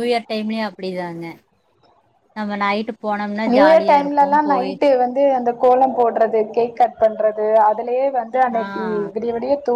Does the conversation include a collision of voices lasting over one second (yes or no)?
no